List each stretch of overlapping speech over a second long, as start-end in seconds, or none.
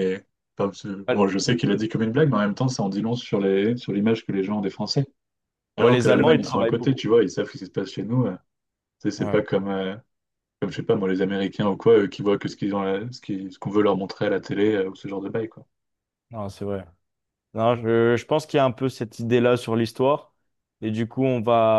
5.8-7.0